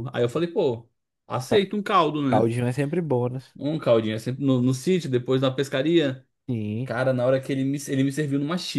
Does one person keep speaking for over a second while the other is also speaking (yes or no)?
no